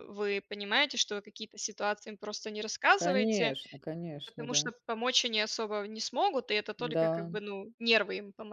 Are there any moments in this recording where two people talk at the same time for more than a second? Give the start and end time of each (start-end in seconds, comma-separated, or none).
none